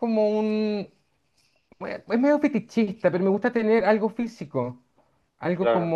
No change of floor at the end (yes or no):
yes